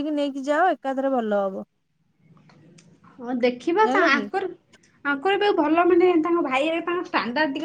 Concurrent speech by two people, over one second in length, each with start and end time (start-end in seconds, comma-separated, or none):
none